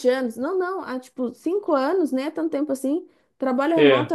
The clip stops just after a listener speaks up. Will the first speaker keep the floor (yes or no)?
yes